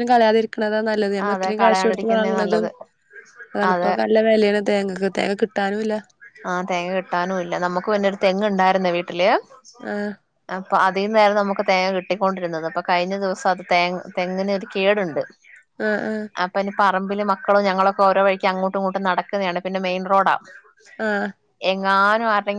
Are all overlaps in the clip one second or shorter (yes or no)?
no